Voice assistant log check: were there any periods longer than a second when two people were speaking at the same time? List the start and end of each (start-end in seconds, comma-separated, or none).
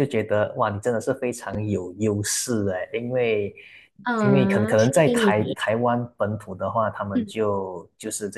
4.2-5.6